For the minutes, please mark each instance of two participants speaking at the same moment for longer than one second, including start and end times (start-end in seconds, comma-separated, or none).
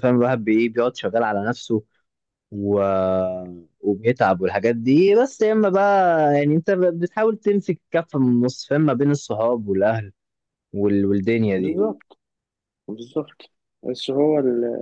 none